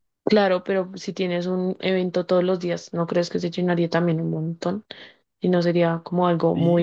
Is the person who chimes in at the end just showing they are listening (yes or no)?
no